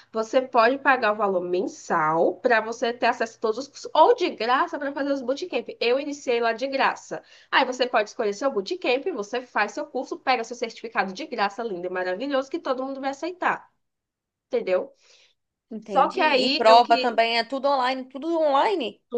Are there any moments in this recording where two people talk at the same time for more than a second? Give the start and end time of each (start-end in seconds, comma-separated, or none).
15.8-17.2